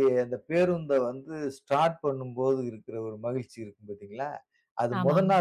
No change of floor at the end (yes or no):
yes